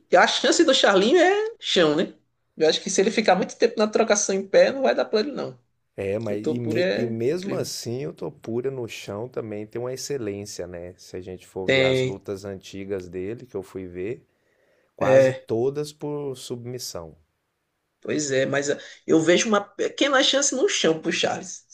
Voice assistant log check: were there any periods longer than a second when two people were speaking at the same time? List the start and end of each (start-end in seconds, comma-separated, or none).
6.3-7.7